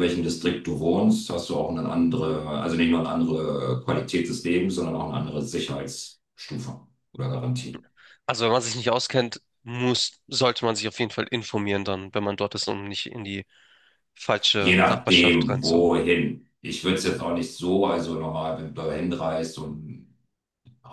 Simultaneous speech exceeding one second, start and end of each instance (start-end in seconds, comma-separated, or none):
14.6-15.9